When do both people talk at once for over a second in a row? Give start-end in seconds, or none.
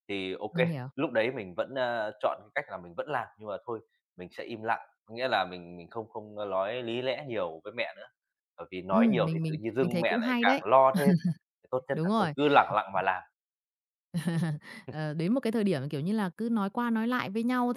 8.9-10.6